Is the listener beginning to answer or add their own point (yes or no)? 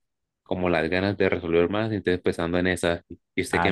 yes